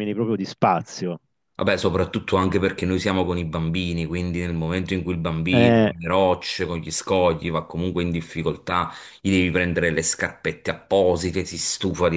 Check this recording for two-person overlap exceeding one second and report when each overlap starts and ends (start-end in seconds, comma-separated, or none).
none